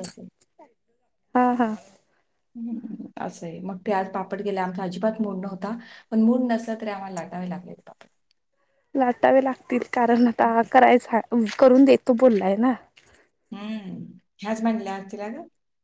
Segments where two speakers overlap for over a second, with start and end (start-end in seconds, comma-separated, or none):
none